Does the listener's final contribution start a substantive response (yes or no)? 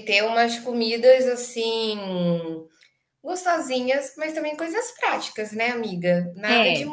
no